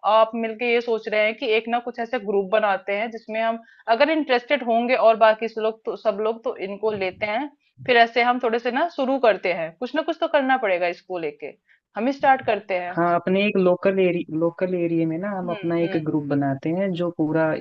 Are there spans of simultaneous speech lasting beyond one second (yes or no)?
no